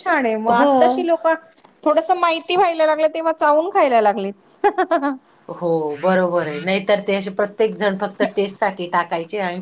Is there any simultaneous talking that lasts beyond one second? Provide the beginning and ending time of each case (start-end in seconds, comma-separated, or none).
none